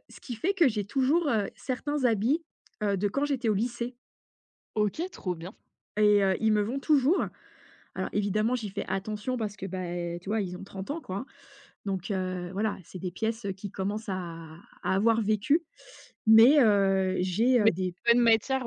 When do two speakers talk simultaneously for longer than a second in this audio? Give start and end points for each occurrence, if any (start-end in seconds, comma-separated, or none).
none